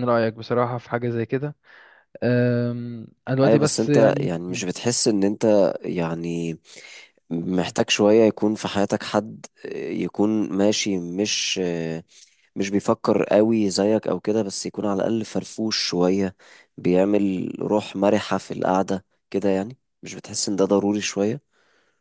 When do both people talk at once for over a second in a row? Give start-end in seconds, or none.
3.4-4.6